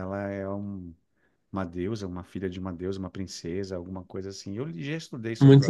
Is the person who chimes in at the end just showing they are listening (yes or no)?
no